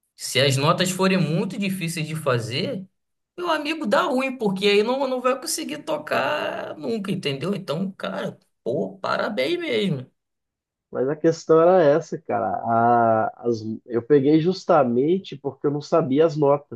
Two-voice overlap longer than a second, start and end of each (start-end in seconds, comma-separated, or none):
none